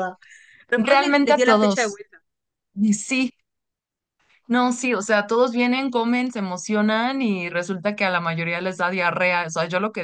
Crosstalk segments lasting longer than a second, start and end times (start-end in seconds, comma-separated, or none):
0.8-2.0